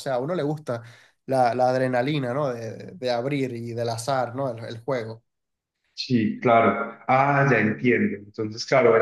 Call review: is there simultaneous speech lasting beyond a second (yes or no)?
no